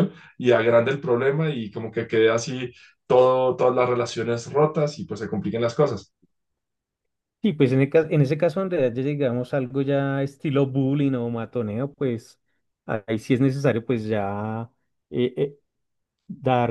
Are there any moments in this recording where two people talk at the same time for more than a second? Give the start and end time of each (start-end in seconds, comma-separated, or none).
none